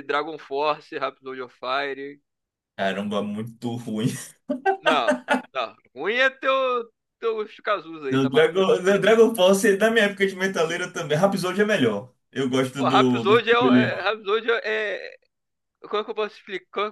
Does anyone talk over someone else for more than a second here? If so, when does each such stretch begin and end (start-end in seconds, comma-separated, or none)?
12.8-14.1